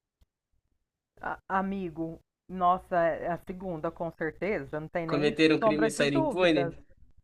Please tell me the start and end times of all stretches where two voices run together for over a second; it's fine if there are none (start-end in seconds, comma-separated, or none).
5.1-6.7